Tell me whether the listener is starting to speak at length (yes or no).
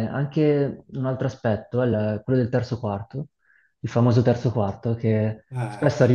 no